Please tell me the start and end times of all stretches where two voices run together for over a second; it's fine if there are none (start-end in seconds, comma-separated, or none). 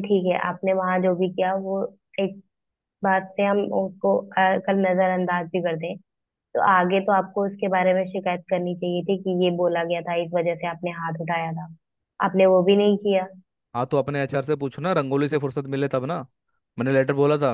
none